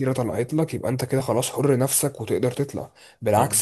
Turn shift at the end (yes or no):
no